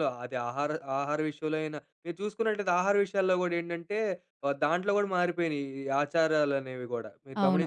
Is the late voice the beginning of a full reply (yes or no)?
yes